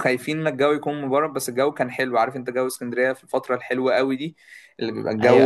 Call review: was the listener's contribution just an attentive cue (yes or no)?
no